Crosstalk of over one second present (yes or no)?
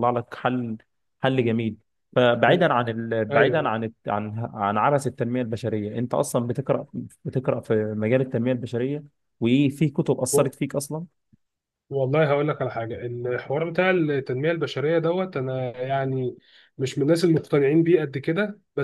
no